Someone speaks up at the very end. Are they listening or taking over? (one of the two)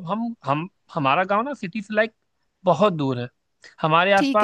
listening